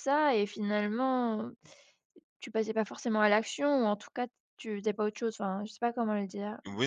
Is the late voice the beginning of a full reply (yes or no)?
yes